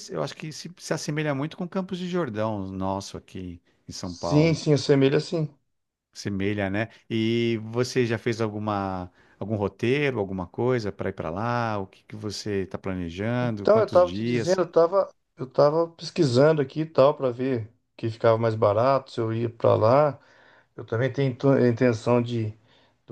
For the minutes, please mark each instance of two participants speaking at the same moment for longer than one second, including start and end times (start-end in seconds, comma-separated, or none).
13.4-14.6